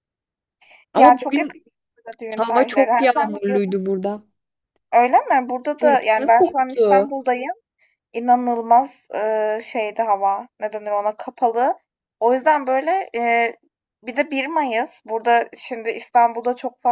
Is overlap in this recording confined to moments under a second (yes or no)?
no